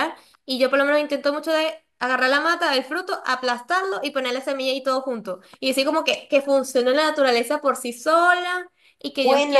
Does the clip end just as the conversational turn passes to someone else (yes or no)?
yes